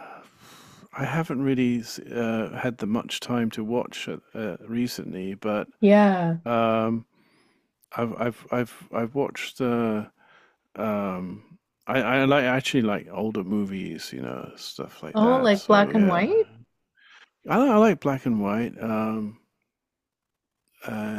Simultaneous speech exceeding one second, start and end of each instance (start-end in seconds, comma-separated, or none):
15.1-16.4